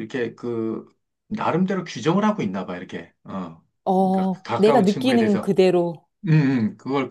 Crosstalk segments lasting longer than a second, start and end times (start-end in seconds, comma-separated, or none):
4.0-5.5